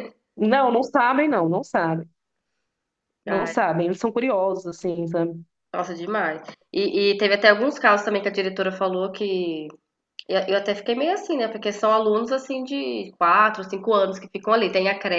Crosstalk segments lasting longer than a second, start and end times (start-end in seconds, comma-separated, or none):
none